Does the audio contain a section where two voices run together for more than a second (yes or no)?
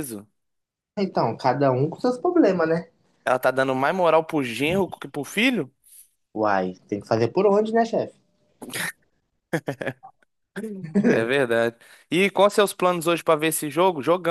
no